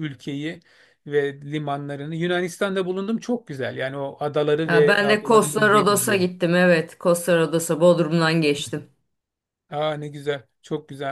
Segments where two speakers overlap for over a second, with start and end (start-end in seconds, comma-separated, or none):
4.7-6.2